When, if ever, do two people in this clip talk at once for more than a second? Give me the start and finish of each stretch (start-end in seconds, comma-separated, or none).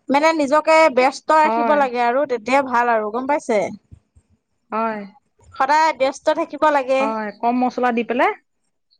none